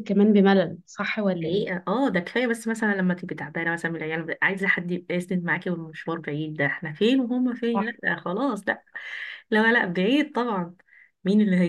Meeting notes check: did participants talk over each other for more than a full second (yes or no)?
no